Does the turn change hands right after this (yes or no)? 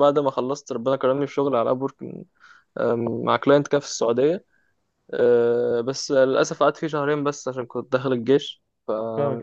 no